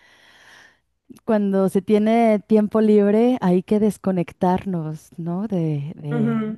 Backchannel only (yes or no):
no